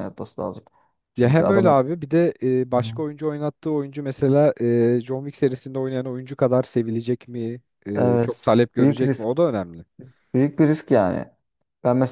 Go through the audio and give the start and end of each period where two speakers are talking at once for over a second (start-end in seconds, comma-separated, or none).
7.9-9.3